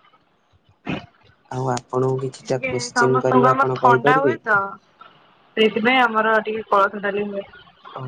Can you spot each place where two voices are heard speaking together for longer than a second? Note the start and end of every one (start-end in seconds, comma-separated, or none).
2.4-4.3